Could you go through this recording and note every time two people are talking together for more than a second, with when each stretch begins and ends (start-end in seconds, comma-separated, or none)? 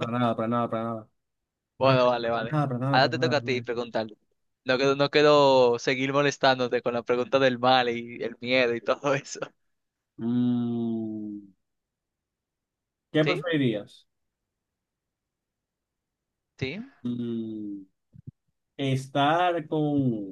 1.8-3.6